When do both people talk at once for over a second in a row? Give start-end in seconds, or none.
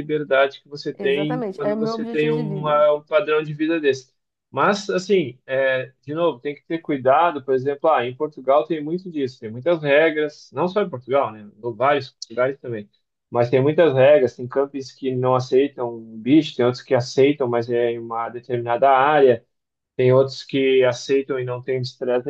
1.0-2.8